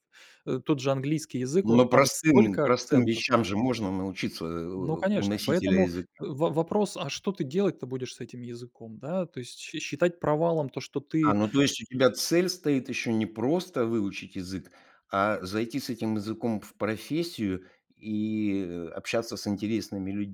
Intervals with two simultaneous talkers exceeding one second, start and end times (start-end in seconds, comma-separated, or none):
1.6-3.2, 4.8-6.1